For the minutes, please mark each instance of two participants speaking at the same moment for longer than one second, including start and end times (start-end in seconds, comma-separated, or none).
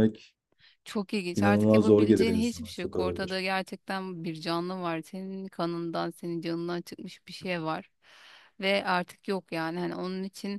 1.3-3.4